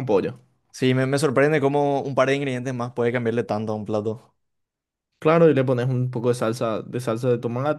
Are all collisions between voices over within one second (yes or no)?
yes